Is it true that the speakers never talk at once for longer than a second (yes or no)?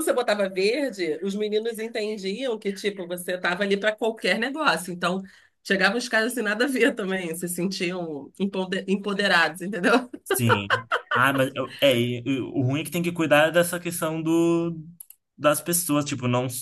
yes